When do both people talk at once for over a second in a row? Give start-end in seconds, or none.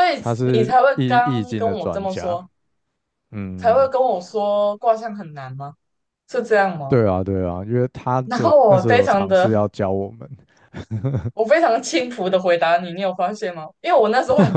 0.5-2.4, 8.2-9.5